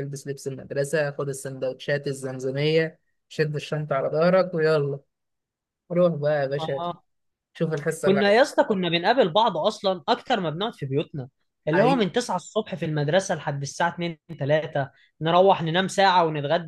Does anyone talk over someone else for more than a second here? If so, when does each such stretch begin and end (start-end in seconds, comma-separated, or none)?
none